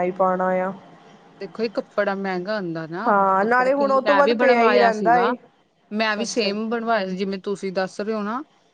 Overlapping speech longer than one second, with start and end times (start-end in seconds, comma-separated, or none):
3.1-5.3